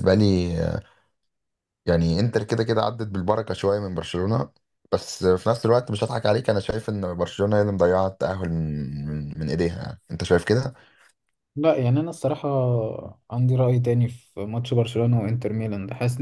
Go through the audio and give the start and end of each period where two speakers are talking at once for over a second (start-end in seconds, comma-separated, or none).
none